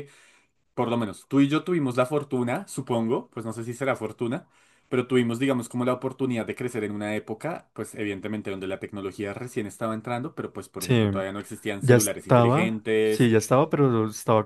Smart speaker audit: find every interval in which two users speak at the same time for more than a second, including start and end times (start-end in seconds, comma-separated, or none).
11.8-13.3